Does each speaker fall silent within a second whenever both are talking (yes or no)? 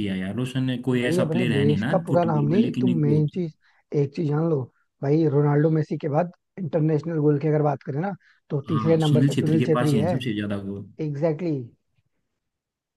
no